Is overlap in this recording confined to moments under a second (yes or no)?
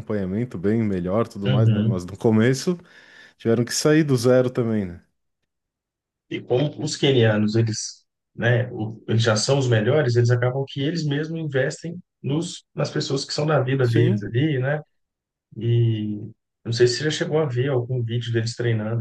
yes